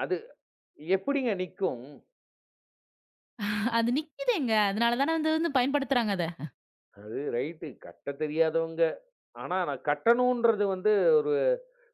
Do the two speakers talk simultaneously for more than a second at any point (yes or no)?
no